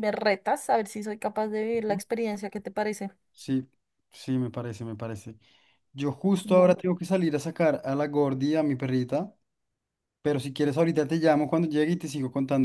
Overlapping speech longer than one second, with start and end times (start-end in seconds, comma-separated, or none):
none